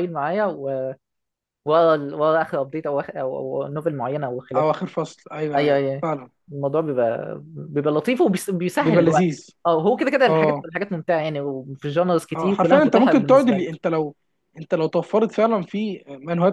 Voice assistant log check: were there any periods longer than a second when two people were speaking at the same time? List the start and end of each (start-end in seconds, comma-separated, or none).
12.3-13.7